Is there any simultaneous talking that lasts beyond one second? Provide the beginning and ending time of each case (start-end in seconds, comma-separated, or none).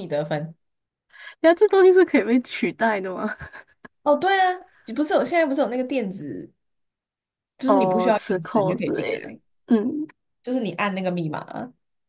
7.7-9.4